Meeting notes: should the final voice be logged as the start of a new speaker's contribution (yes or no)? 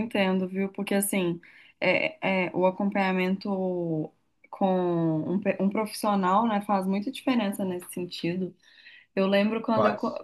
no